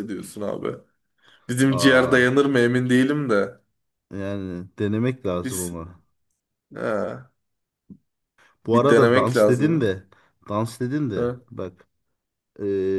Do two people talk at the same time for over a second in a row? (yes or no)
yes